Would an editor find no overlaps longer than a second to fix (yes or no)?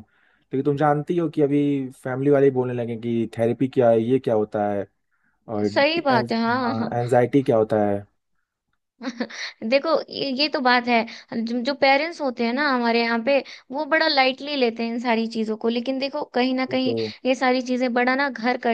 yes